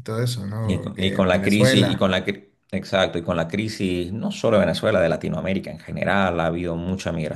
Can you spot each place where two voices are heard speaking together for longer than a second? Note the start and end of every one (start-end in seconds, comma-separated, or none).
0.6-2.1